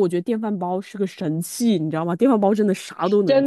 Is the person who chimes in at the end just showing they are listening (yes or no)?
no